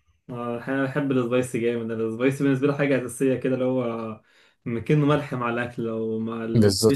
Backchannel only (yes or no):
no